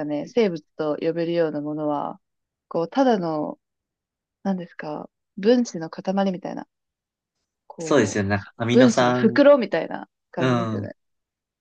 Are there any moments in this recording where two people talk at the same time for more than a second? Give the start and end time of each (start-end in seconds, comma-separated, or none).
7.8-9.4